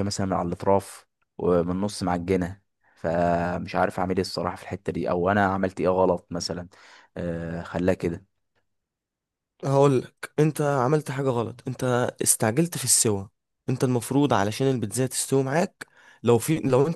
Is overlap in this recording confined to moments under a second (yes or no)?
yes